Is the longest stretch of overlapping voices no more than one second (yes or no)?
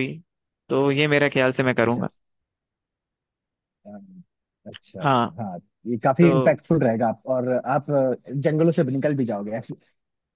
yes